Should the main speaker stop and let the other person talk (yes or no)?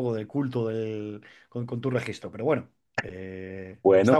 yes